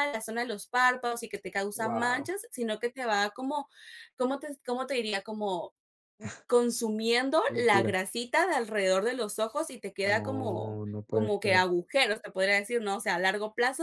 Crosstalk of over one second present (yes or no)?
yes